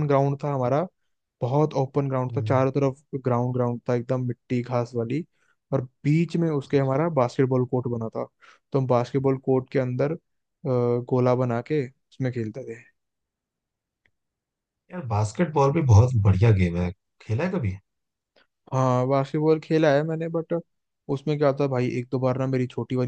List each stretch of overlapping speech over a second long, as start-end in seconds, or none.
none